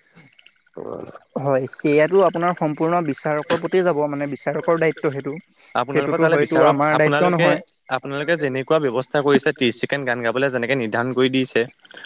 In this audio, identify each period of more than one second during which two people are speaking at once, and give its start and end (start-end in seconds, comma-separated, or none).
5.8-7.5